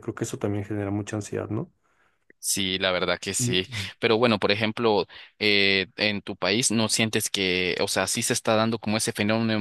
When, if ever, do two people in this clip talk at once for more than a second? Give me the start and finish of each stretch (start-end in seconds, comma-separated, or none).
none